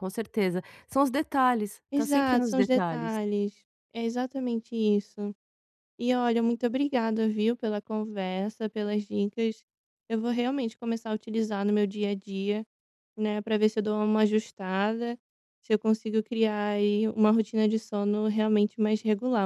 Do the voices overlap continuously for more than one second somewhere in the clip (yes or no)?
yes